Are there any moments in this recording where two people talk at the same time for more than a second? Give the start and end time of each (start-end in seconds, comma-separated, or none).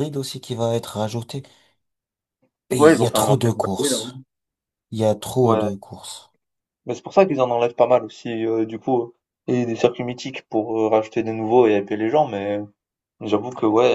2.8-4.1